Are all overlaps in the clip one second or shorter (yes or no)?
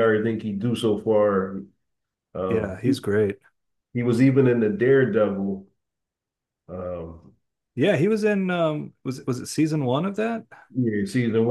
yes